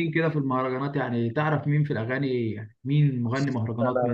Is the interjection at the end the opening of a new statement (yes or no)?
yes